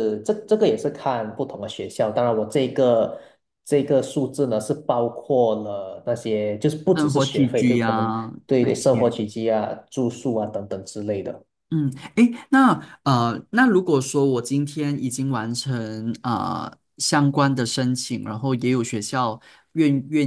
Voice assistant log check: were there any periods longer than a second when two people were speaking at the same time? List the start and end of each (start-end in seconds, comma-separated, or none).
6.9-9.0